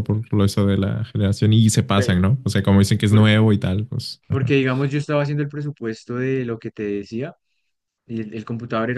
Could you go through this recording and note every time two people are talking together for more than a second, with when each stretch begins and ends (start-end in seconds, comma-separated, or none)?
none